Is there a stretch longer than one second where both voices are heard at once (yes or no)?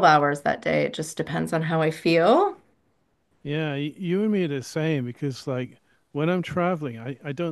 no